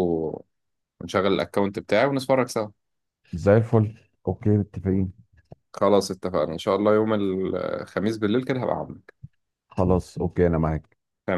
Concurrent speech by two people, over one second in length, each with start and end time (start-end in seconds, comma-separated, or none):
none